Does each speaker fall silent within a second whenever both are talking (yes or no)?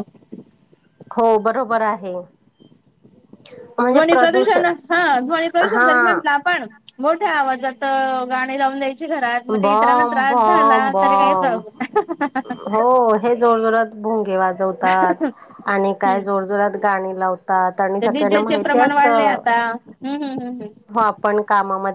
no